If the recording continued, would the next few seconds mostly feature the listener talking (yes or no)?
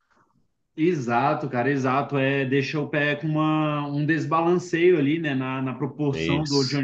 no